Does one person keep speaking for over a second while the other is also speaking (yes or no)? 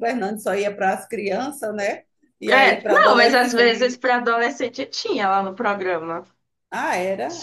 yes